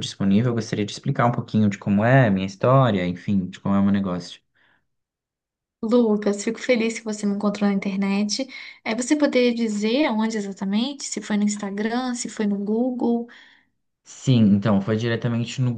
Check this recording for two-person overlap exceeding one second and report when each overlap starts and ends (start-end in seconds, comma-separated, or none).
none